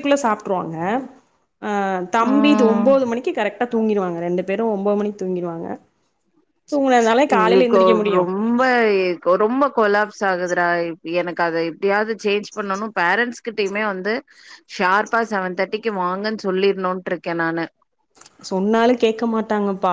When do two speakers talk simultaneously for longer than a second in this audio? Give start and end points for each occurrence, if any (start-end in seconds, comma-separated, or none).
none